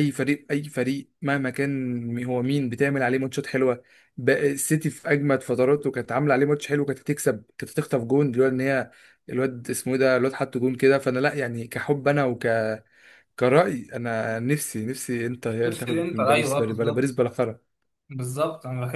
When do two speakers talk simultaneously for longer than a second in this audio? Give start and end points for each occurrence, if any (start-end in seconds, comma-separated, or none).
15.7-17.2